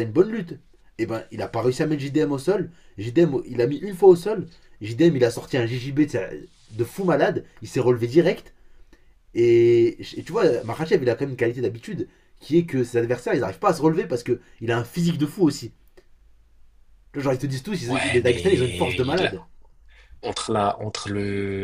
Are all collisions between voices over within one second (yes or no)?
no